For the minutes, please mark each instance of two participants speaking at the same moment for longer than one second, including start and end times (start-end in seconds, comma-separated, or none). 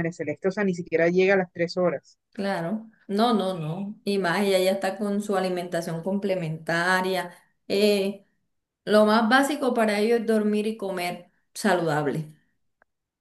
none